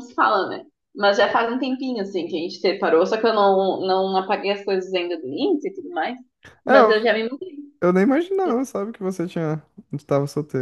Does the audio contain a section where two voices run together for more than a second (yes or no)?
no